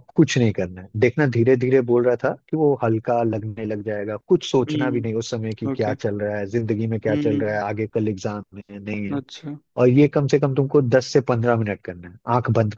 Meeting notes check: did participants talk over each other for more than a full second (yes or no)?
yes